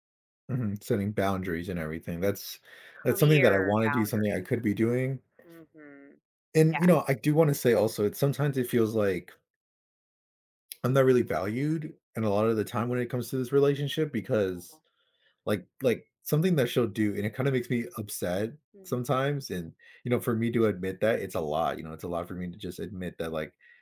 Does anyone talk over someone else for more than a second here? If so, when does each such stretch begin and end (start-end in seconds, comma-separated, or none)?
3.0-4.7